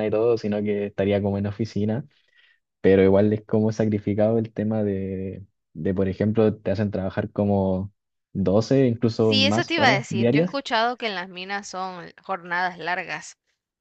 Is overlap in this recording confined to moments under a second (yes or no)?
no